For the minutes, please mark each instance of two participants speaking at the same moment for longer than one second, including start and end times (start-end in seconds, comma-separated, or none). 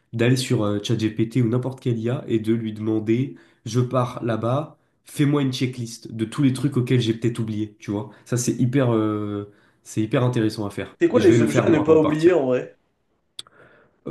11.0-12.3